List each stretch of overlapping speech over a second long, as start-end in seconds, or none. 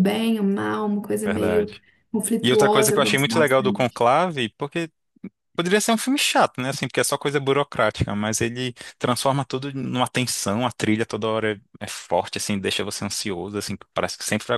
2.4-4.0